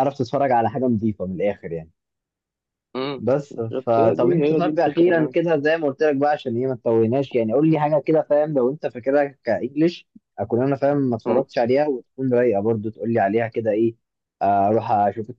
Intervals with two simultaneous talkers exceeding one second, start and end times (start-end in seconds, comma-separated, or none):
3.2-5.3